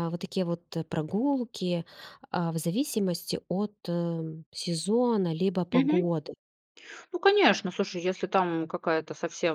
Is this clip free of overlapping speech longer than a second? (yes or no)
yes